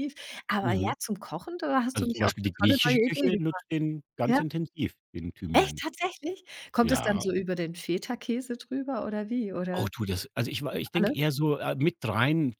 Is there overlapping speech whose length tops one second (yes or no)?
yes